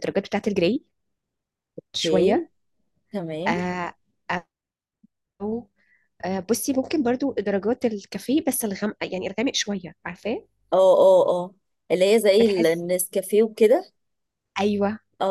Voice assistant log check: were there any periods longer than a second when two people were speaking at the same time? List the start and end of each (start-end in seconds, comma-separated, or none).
none